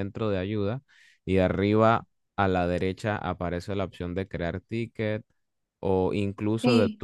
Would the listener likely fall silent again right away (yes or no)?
yes